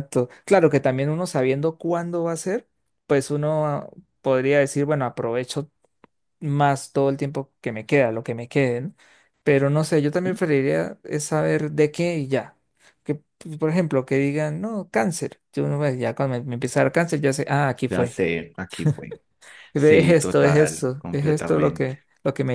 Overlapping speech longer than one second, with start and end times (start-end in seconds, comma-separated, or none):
19.7-21.9